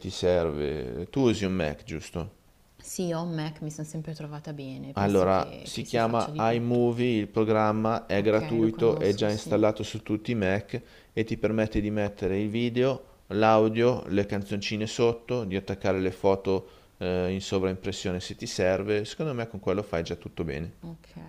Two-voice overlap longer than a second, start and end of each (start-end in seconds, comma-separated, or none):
5.0-6.8, 8.2-9.6